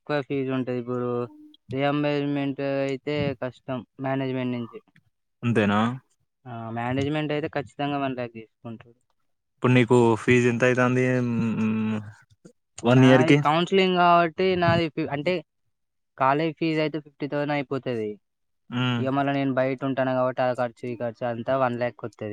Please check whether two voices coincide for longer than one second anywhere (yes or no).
no